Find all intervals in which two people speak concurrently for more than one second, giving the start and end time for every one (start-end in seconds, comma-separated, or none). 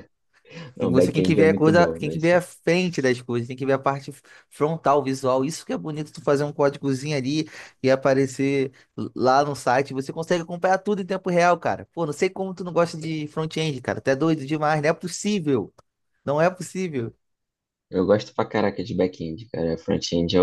0.8-2.2